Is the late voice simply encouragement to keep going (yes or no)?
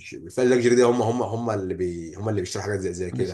no